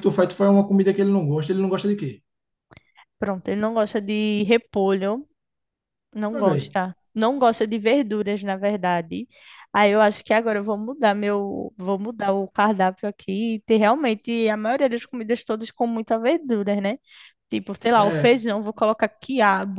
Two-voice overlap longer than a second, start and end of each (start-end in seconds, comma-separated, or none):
none